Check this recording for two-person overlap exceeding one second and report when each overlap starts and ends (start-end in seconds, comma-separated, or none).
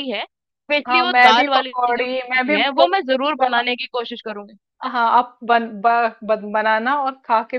0.9-3.6